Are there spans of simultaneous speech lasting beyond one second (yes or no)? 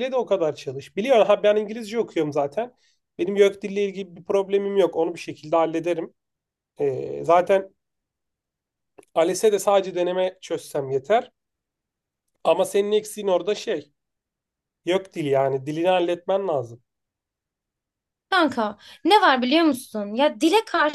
no